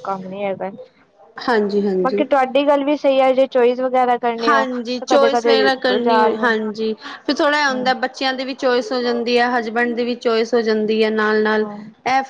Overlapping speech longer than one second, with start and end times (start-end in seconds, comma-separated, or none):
4.5-6.3